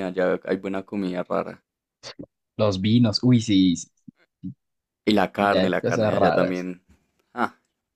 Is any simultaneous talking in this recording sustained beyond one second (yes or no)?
yes